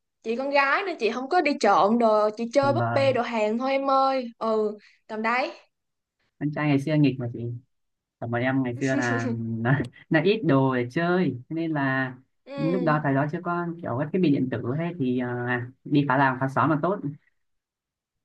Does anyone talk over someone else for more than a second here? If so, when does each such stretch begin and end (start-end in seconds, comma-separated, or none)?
none